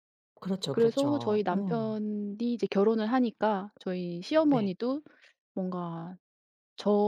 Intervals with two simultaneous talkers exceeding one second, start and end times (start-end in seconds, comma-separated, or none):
0.7-1.9